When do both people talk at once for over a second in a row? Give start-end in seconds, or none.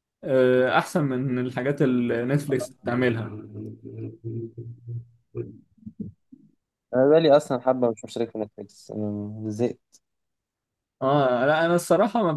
none